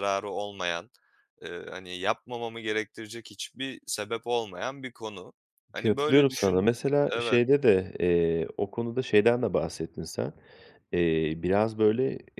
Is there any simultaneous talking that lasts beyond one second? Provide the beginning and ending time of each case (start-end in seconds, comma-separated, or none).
5.8-7.4